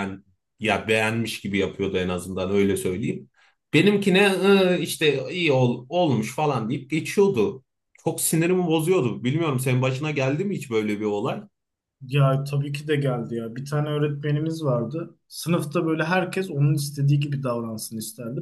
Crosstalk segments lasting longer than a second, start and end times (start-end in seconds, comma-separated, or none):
none